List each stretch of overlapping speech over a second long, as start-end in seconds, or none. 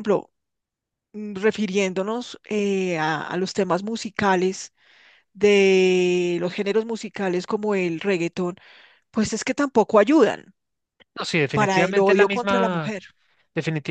11.5-12.9